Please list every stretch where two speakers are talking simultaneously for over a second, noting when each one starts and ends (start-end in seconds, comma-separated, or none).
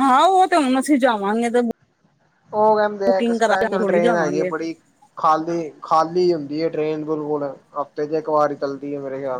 3.1-4.5